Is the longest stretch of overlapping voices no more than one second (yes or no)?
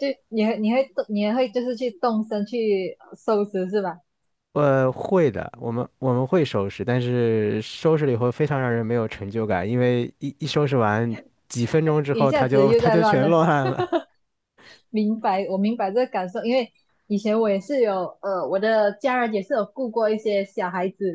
no